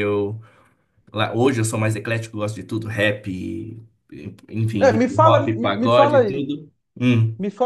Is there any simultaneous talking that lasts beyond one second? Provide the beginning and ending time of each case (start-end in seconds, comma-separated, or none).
4.8-6.5